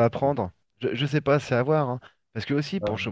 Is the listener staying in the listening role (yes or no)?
yes